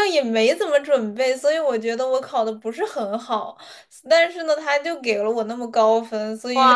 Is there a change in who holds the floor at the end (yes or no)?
yes